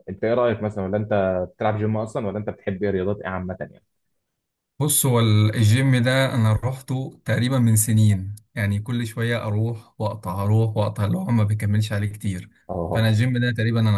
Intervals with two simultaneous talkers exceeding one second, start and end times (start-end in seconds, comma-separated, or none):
none